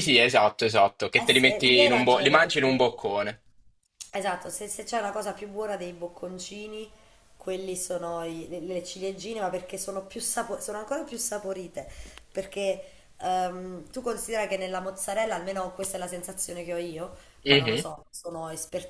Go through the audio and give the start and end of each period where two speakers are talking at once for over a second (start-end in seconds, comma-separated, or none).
1.2-2.9